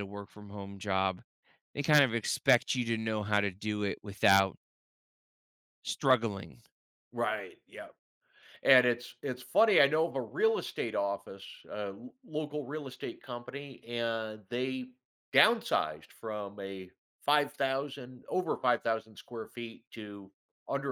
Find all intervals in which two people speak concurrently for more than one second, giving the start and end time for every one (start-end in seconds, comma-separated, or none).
none